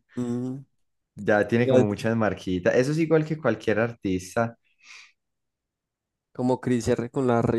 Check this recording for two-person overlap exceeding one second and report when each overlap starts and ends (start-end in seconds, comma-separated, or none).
none